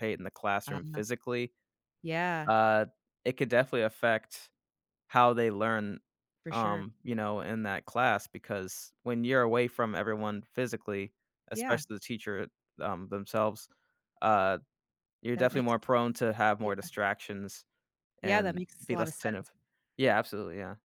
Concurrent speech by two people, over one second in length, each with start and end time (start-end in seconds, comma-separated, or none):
18.2-19.5